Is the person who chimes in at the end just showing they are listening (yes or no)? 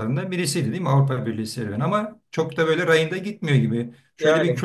yes